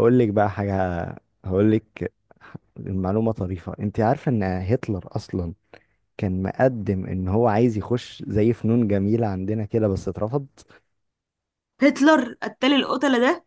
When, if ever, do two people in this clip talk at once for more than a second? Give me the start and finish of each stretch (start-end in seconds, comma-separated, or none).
none